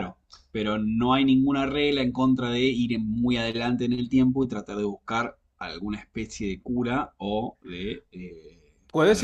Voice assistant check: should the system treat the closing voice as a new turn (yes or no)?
yes